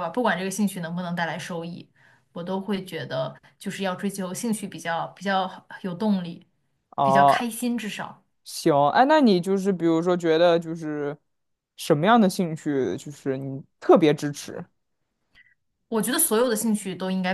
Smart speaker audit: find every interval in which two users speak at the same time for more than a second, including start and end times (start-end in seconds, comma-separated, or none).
none